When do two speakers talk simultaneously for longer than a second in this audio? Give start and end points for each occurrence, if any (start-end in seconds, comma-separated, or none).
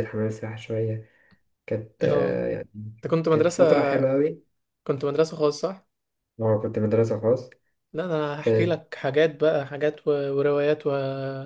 none